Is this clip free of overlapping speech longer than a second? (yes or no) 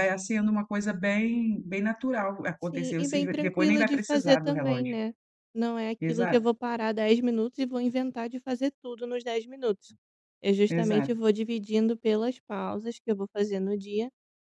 no